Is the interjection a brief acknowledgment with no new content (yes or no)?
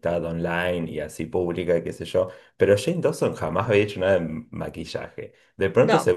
yes